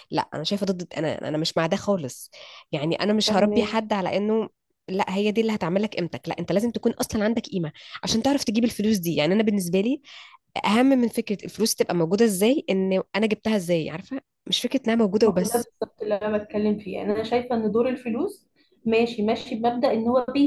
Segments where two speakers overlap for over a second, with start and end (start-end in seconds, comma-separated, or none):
none